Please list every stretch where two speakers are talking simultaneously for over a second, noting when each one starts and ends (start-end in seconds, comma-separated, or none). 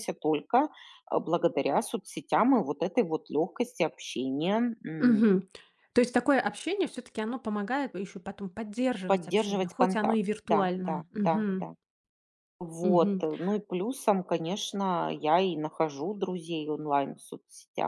9.1-11.7